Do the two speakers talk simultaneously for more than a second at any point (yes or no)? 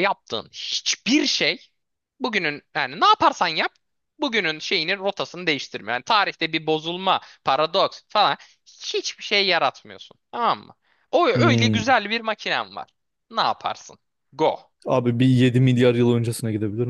no